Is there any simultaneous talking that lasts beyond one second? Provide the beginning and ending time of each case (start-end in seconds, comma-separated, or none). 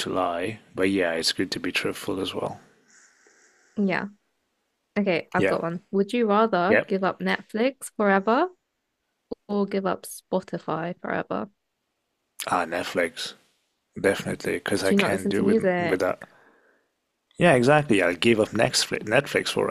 14.8-16.0